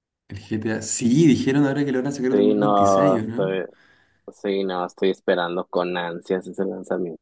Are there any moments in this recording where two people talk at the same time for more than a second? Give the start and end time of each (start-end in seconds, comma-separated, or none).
2.3-3.6